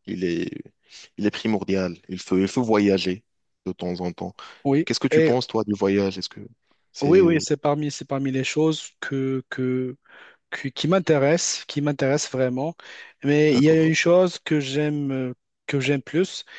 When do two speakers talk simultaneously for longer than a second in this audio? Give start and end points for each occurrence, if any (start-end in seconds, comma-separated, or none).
none